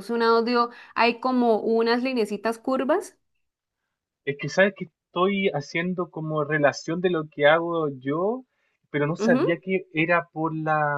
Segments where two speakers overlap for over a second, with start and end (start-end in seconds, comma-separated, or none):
none